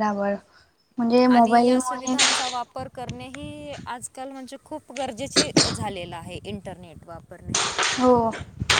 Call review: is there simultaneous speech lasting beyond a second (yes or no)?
no